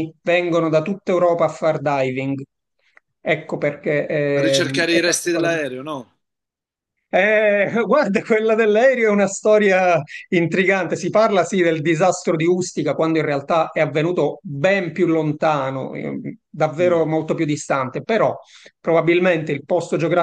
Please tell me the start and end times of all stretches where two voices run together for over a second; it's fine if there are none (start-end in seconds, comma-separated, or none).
4.3-5.6